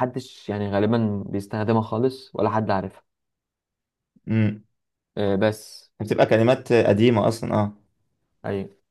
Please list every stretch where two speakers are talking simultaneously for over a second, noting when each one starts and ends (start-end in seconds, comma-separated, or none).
none